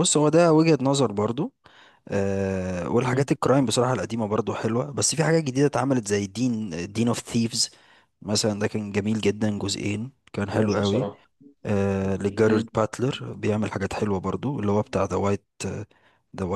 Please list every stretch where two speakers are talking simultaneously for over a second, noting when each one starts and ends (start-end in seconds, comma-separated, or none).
none